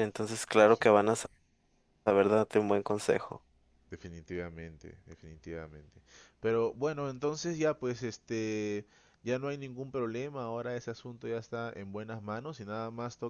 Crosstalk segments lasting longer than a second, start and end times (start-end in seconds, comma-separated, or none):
none